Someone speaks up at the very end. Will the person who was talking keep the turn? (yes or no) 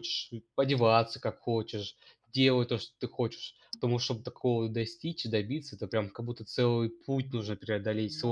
no